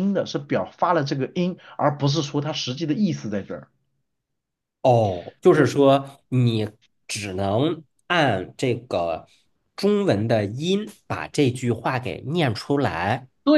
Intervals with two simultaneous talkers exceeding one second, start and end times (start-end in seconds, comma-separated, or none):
none